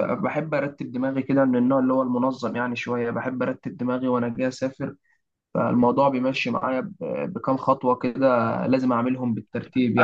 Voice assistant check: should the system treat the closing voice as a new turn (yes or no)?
yes